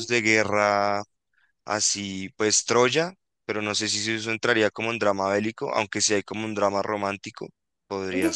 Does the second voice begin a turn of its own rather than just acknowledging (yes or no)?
yes